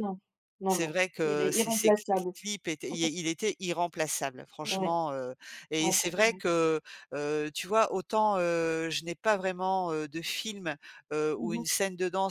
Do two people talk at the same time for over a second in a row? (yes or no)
yes